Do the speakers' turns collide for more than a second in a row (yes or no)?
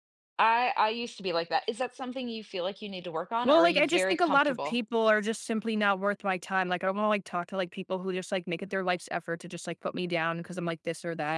yes